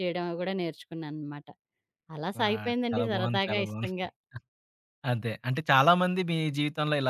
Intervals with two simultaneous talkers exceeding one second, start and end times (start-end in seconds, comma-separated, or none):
2.4-4.0